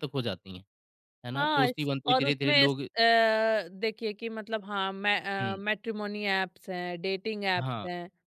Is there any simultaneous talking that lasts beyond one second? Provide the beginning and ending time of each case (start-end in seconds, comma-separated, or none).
1.4-2.9